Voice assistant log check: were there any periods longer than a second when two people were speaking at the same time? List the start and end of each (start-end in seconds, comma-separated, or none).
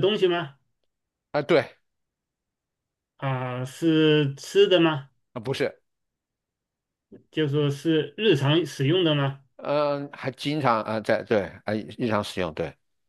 none